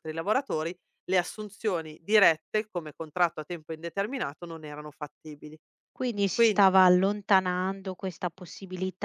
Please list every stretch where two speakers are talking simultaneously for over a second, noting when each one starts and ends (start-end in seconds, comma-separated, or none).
none